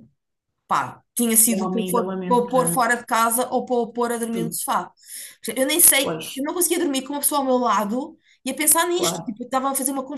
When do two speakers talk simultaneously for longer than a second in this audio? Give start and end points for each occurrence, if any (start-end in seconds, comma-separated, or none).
1.5-2.9